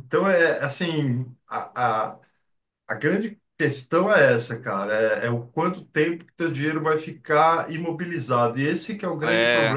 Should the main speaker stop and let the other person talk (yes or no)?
no